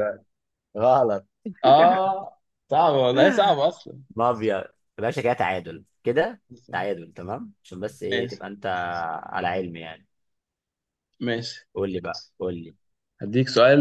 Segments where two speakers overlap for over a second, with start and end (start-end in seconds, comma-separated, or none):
none